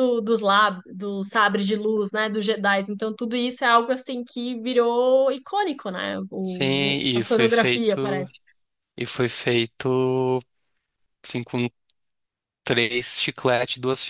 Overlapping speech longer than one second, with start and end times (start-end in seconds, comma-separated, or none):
6.4-8.3